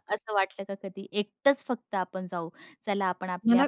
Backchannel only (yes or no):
yes